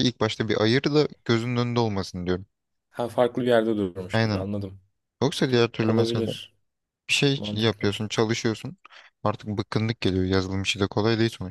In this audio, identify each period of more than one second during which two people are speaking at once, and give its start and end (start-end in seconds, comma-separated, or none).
none